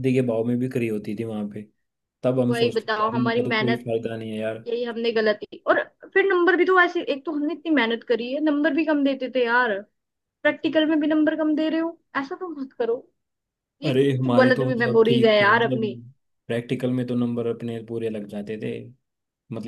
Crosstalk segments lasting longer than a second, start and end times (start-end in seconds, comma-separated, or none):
2.5-3.9, 13.9-15.8